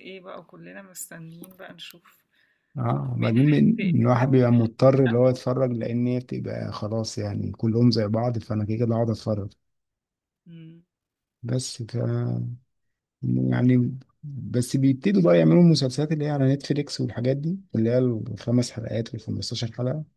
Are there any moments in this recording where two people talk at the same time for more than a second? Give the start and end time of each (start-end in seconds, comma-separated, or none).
3.1-5.4